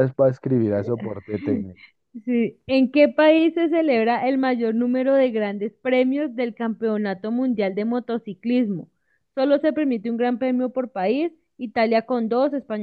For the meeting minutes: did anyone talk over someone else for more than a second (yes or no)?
no